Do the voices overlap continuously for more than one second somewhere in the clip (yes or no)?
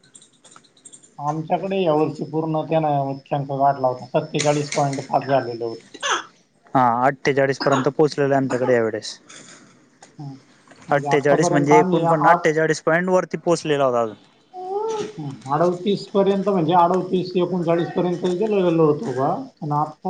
yes